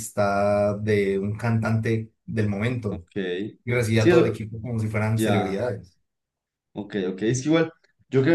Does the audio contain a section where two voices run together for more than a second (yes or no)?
no